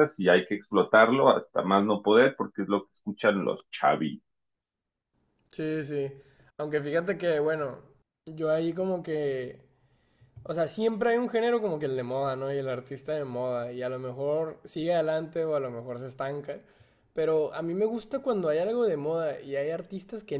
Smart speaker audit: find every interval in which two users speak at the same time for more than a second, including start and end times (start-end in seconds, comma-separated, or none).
none